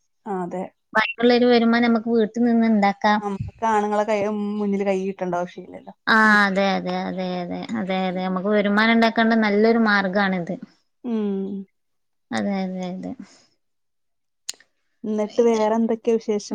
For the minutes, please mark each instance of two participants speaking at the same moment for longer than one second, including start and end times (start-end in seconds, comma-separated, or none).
none